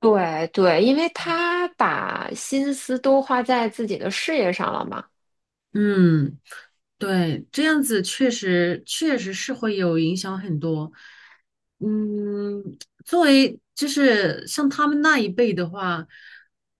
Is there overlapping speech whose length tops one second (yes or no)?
no